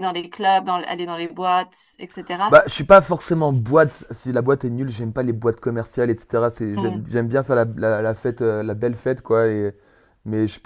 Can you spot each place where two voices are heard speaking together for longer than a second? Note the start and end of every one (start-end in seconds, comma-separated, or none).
none